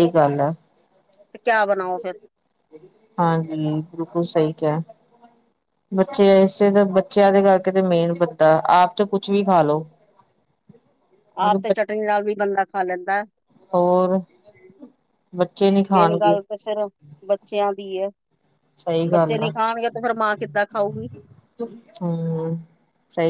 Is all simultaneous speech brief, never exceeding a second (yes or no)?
yes